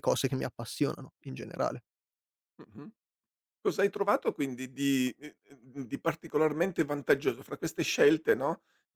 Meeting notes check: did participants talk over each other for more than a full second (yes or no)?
no